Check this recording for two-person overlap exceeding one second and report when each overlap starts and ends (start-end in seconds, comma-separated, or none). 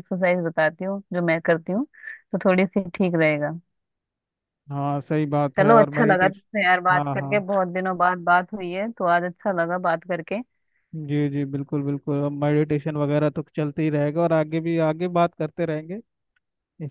5.6-7.4